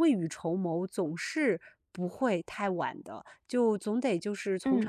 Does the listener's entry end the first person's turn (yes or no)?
no